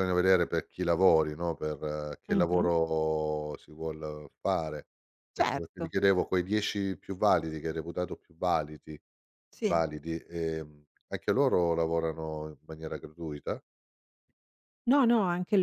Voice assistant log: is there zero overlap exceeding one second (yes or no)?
yes